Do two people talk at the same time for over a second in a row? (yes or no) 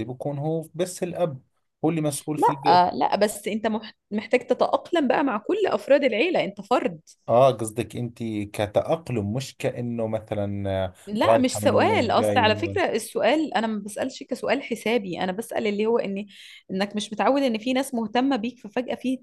yes